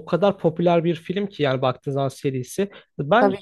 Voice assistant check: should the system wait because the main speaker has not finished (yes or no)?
yes